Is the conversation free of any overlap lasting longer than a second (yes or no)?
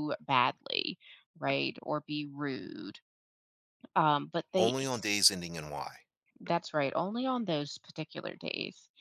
yes